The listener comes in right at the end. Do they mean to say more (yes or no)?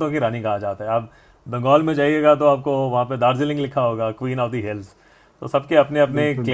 no